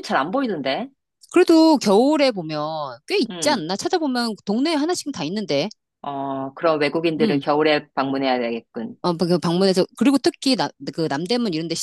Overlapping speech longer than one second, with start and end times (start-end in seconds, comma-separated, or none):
none